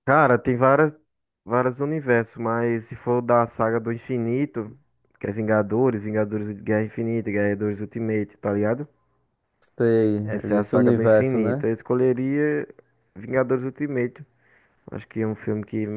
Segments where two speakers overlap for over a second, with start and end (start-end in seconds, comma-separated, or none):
10.3-11.7